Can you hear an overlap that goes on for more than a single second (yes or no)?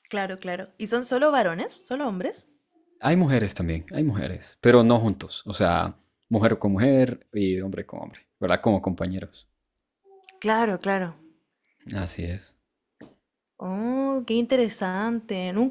no